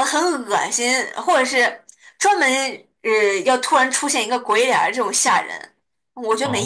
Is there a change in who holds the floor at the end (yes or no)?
yes